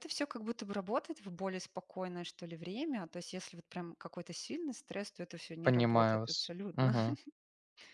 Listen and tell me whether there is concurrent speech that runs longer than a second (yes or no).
yes